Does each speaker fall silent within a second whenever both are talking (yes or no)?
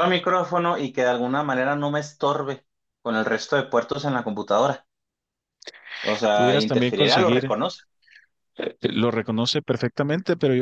no